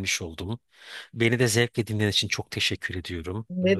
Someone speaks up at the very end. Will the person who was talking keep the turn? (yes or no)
no